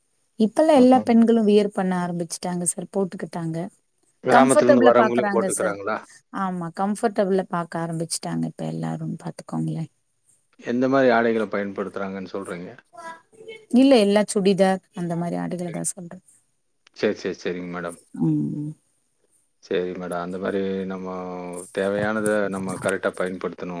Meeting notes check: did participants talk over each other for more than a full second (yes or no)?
yes